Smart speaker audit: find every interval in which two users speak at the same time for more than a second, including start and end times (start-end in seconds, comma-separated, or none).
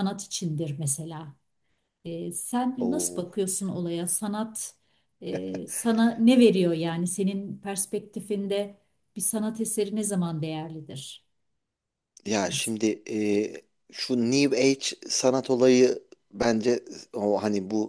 none